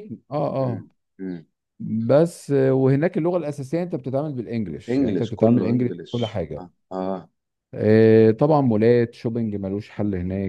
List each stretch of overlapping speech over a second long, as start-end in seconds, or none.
4.9-6.7